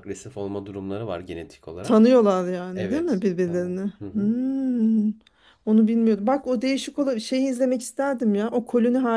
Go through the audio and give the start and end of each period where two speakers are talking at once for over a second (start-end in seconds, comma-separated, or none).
2.7-4.4